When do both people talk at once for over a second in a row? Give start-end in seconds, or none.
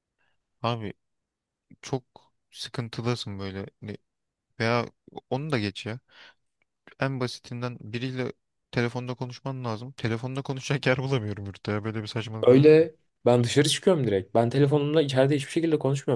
none